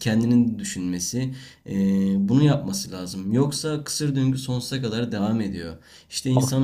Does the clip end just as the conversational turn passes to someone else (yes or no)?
no